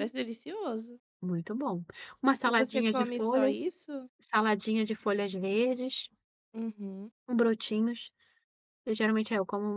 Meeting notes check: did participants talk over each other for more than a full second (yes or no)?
yes